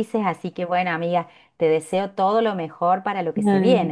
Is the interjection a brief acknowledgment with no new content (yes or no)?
no